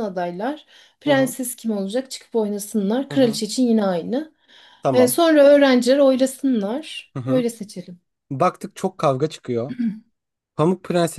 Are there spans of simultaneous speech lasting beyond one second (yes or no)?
no